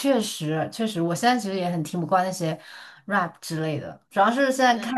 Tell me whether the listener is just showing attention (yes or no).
yes